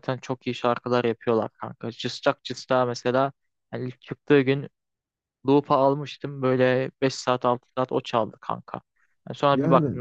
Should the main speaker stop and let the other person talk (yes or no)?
no